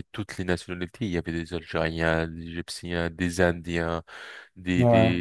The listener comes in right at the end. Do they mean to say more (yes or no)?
no